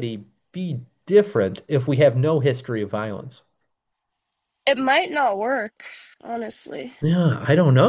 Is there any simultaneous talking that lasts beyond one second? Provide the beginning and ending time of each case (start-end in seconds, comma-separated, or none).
none